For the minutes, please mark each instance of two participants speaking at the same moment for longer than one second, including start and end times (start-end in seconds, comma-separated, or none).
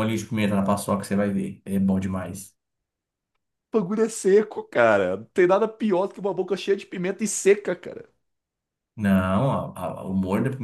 none